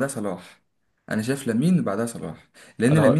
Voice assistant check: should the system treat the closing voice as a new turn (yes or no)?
no